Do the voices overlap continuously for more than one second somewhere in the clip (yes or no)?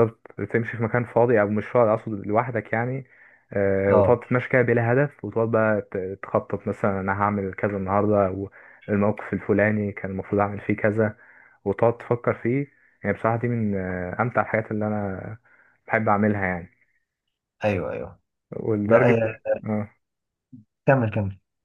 no